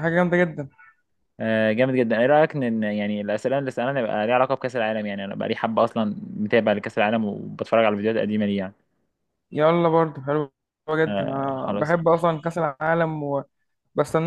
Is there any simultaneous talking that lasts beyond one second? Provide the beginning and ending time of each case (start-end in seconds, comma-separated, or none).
11.1-12.3